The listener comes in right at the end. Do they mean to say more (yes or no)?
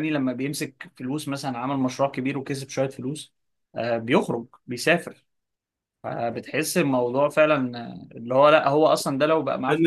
yes